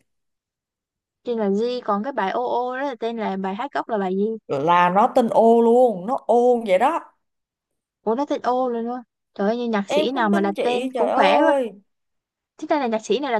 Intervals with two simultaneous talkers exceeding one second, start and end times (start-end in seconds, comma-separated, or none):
9.9-11.5